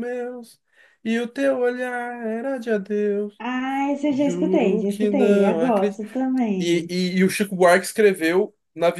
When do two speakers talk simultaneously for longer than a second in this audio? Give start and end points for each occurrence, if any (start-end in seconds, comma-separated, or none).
4.1-5.6